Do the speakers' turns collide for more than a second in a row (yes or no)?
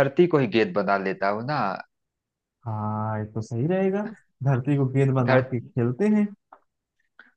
no